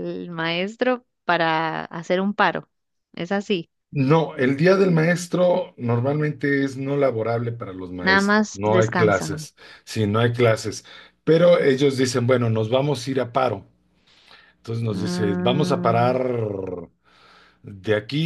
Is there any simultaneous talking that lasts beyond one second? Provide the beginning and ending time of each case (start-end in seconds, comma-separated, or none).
8.0-9.5, 14.9-16.2